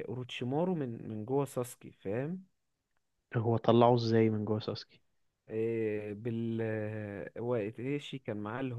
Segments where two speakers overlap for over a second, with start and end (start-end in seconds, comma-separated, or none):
none